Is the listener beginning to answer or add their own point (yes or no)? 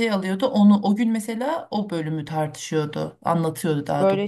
yes